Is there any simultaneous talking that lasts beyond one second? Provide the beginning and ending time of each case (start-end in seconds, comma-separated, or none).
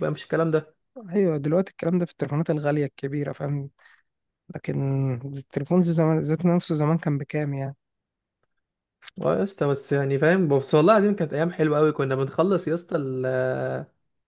none